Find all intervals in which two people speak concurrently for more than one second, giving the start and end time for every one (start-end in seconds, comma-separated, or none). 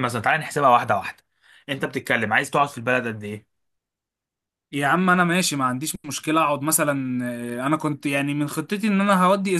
none